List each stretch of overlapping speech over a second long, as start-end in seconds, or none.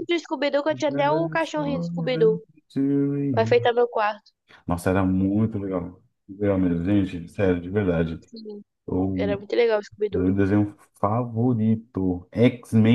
0.7-2.4